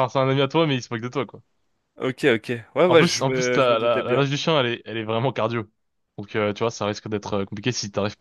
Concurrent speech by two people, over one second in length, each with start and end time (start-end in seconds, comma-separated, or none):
2.9-4.3